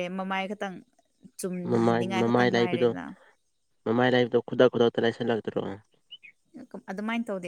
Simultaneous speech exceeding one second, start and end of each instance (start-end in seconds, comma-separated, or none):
1.6-2.9